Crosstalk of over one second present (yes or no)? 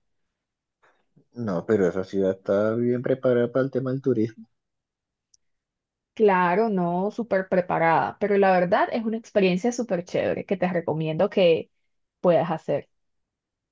no